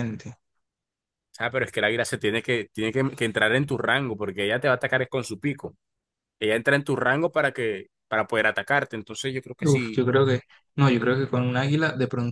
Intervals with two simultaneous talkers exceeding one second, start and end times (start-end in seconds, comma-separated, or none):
none